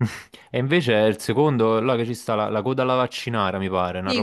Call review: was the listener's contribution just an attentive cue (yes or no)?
no